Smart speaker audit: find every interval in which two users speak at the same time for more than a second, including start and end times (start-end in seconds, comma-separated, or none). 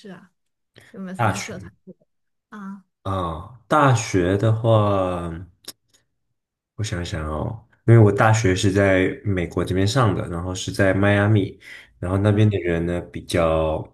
none